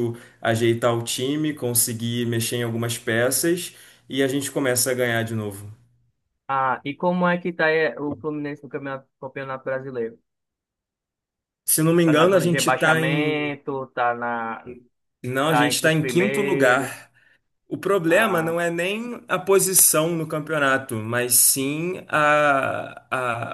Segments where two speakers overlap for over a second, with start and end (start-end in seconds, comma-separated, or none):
12.0-13.5, 15.5-17.1